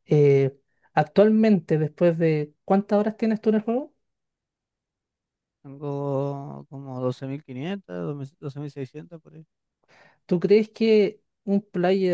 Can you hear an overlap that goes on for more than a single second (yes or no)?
no